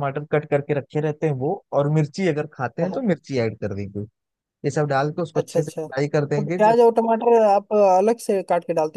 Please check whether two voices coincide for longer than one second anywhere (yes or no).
yes